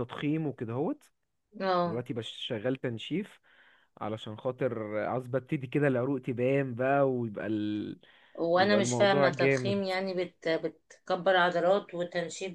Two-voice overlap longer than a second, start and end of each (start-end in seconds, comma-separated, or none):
8.6-9.8